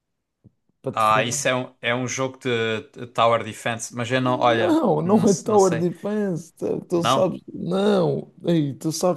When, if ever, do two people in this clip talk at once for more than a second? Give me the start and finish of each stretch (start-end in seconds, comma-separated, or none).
4.2-5.9